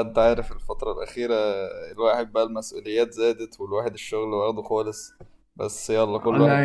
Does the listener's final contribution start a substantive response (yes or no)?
yes